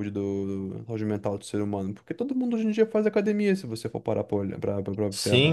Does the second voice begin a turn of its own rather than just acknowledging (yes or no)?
yes